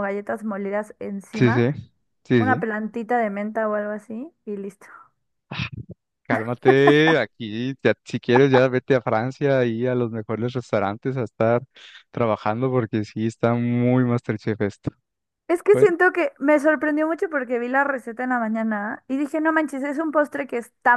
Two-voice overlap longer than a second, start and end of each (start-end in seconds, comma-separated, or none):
none